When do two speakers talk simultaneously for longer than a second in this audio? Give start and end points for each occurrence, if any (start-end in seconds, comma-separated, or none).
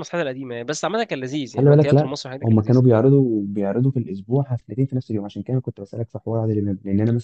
1.5-2.8